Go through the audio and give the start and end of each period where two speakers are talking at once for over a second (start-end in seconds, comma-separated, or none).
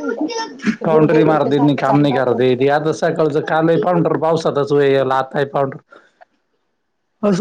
0.9-2.4